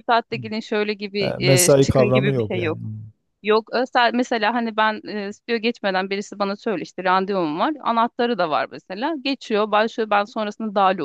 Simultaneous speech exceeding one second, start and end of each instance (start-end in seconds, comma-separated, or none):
1.2-2.8